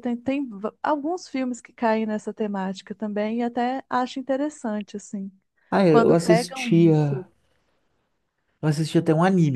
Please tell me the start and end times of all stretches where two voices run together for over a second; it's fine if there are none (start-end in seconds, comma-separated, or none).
5.9-7.2